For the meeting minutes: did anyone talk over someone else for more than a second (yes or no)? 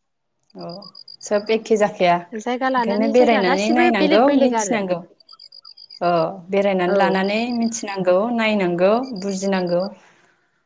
yes